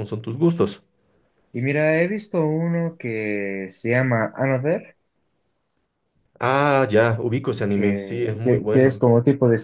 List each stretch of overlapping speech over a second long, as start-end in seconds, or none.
7.7-9.0